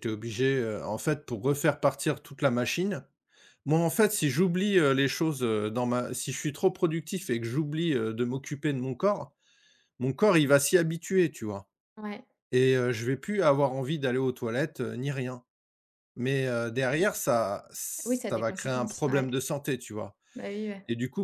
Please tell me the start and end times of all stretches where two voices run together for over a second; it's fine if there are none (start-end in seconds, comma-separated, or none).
18.0-19.3